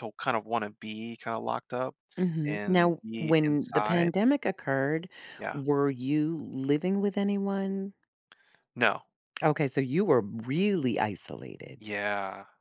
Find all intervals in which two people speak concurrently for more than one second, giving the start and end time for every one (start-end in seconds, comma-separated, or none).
2.5-4.1